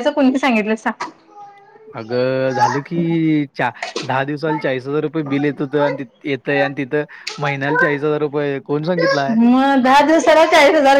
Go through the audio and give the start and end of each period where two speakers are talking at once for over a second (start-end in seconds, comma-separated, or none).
none